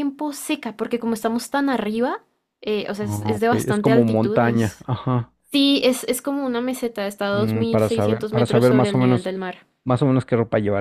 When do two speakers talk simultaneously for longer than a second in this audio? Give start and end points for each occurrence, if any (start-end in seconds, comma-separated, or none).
3.0-4.9, 7.3-9.3